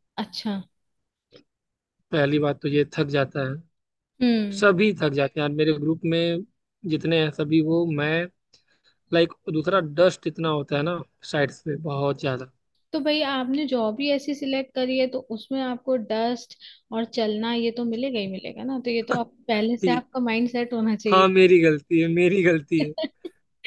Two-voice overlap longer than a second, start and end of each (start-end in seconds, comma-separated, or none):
none